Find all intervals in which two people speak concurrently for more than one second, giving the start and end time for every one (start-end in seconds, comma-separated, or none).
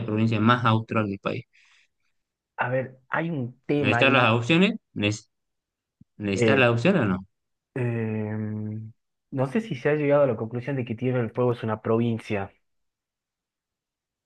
none